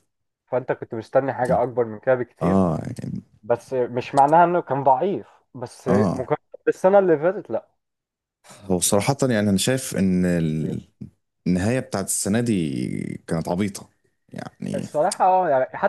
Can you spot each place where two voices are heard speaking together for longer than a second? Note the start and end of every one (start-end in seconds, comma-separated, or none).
none